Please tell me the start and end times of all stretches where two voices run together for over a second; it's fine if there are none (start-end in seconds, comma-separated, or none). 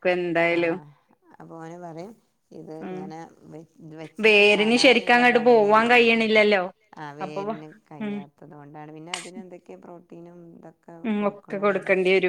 4.2-6.1